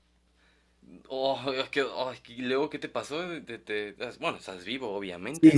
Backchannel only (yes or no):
no